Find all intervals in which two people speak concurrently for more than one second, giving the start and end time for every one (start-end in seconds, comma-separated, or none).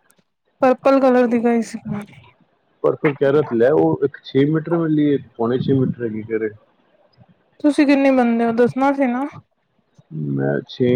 none